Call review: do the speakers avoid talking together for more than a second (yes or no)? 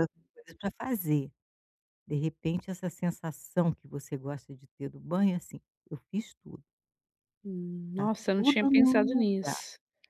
no